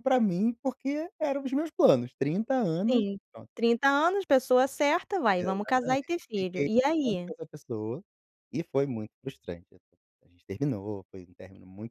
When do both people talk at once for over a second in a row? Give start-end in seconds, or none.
5.4-7.3